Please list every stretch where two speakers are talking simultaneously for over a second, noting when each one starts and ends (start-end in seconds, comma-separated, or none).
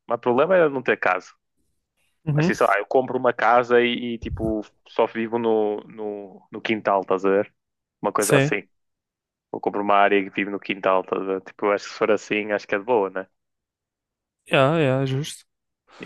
none